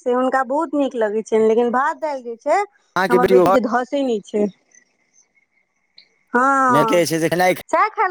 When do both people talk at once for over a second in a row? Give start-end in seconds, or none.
none